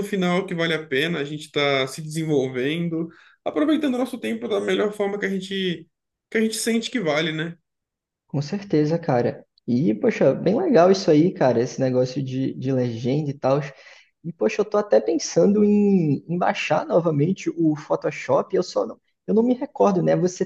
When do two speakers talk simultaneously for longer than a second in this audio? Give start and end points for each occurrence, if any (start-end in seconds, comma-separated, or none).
none